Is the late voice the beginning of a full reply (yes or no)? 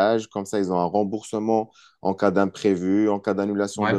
no